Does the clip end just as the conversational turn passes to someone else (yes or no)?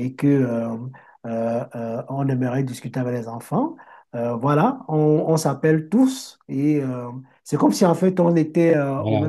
no